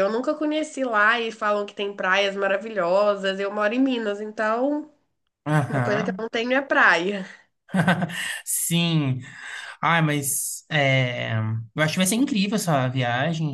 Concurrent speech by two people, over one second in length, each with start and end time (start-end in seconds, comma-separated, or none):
none